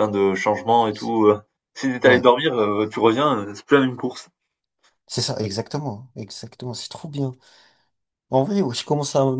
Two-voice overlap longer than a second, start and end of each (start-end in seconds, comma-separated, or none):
none